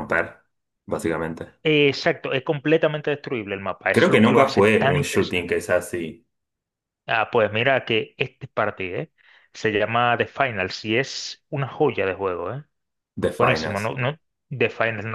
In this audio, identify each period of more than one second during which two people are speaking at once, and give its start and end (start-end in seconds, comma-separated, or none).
3.9-5.5